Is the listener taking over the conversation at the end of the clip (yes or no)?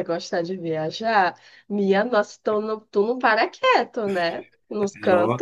yes